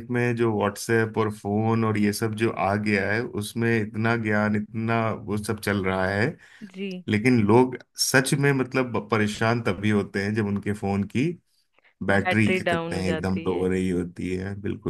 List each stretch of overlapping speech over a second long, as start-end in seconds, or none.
12.1-13.6